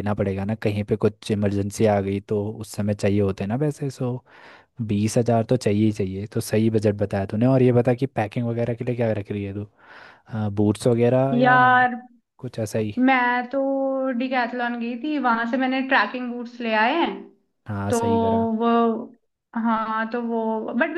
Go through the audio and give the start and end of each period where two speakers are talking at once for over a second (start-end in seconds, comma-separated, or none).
none